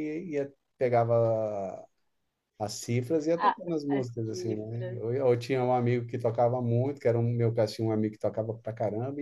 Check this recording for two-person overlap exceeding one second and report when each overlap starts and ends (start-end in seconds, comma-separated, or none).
3.4-5.0